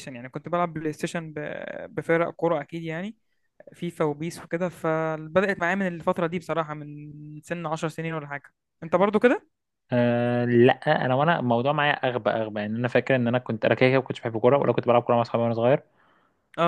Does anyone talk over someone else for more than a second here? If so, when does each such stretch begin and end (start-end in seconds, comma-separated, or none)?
none